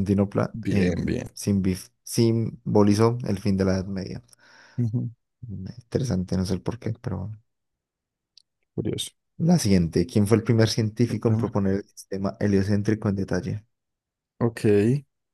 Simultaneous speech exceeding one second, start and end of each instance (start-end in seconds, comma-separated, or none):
none